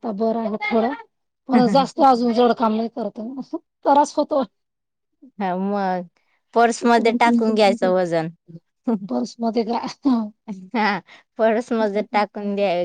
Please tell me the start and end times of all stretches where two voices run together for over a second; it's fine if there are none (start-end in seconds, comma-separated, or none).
6.7-7.9